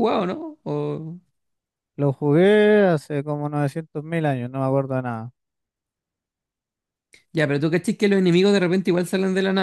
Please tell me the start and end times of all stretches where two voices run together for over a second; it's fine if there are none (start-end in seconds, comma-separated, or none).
none